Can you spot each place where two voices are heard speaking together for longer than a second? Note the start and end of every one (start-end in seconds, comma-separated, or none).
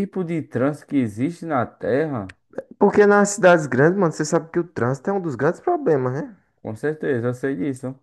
none